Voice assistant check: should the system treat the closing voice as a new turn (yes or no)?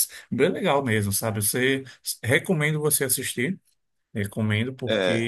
no